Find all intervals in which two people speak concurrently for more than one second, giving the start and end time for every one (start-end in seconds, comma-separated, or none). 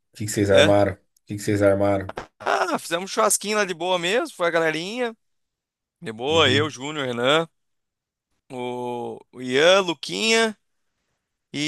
none